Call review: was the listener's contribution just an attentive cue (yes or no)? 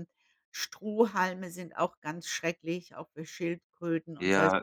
no